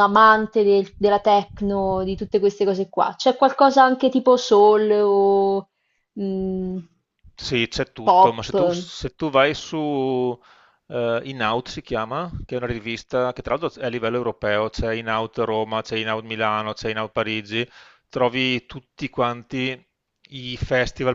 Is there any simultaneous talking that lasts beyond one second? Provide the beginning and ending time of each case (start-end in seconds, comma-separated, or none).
none